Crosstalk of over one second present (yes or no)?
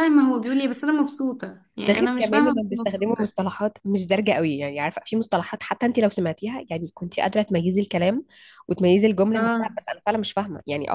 yes